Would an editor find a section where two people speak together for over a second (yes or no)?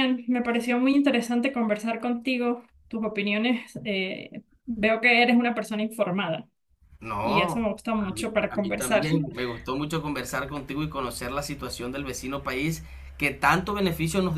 yes